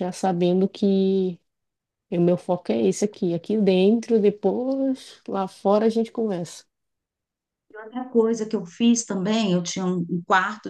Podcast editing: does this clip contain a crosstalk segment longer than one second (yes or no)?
no